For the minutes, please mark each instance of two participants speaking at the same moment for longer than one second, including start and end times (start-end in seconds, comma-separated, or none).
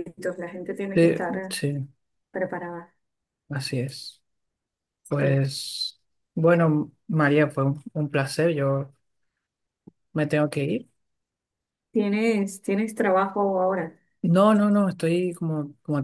none